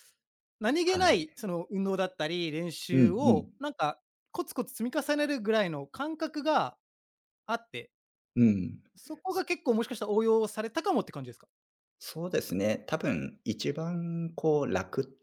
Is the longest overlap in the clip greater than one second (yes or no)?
no